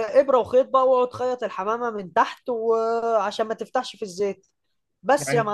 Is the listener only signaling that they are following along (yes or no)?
no